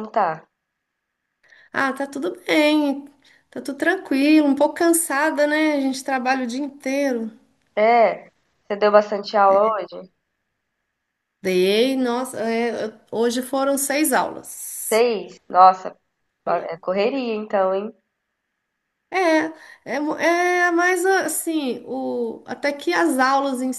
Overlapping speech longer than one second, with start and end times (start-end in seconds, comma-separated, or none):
none